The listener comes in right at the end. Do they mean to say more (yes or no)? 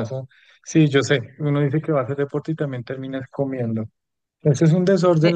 no